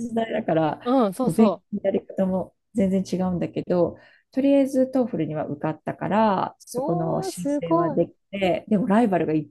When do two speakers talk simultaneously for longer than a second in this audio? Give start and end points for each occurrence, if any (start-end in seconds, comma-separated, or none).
6.7-8.0